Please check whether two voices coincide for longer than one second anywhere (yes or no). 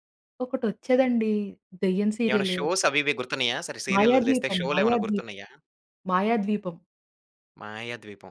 yes